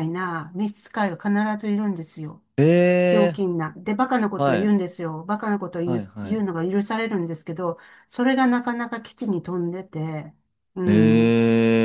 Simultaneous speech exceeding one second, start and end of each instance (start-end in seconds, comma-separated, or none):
none